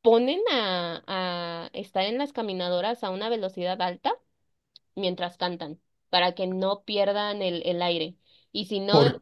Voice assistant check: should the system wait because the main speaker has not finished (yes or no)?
yes